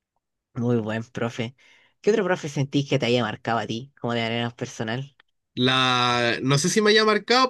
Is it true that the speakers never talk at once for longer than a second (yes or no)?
yes